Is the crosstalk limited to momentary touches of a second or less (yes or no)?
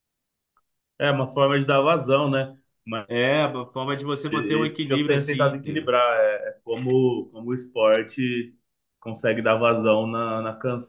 no